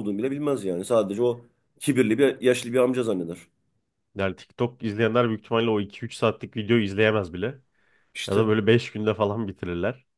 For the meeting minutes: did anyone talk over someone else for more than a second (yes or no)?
no